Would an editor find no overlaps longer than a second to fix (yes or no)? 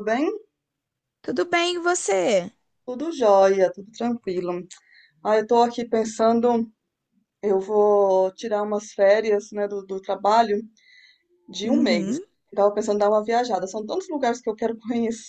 yes